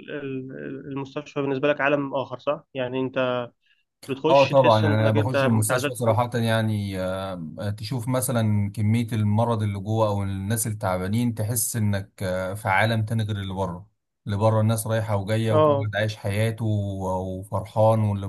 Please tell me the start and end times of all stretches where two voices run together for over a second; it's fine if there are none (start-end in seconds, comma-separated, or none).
4.3-6.2